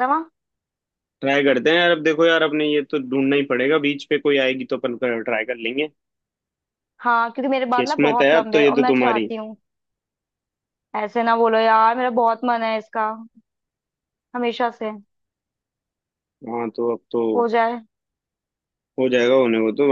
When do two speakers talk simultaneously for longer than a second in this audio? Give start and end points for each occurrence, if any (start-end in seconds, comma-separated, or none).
7.8-9.3